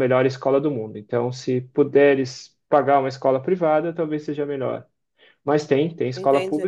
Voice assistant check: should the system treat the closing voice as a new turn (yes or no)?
yes